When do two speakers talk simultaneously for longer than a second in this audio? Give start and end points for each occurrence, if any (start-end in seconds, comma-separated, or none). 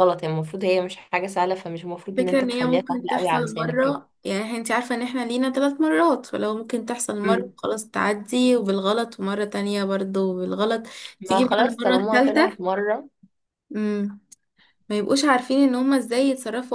2.2-4.2, 11.2-12.6